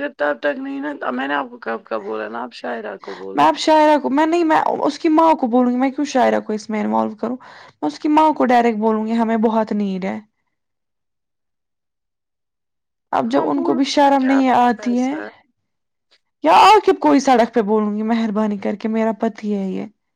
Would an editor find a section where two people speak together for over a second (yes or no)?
yes